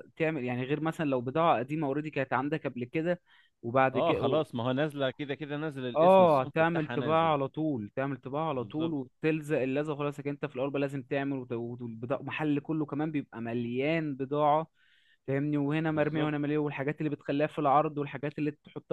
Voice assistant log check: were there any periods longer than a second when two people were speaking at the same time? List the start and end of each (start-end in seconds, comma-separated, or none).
6.0-7.3